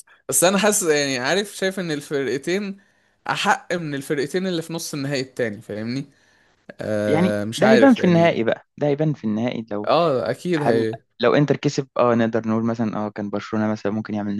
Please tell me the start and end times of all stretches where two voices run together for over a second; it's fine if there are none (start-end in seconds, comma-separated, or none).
7.1-8.4